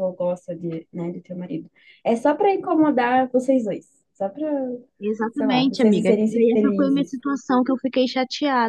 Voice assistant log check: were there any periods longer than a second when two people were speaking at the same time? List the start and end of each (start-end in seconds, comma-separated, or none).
5.3-7.1